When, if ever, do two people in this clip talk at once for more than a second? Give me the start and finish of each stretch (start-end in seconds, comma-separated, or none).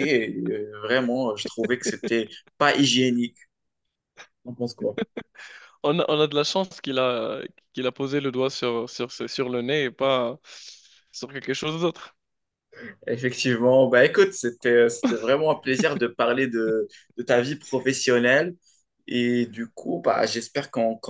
none